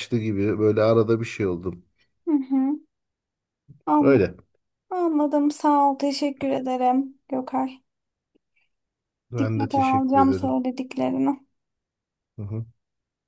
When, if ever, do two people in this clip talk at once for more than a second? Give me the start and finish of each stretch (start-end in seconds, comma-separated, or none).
9.4-10.6